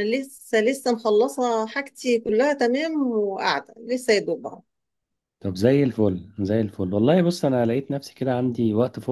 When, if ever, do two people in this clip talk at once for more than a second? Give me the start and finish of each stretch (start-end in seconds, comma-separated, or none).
none